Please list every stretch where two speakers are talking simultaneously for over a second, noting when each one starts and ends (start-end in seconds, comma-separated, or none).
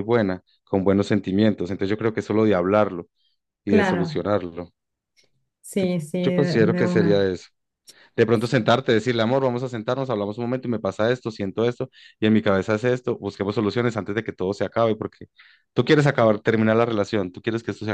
5.8-7.2